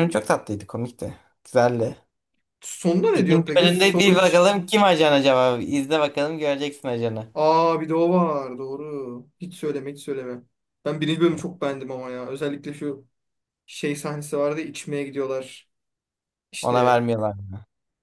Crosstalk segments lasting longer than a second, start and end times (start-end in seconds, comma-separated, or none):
3.1-4.4